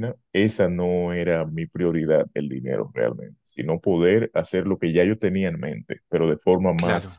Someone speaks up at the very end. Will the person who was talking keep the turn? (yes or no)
yes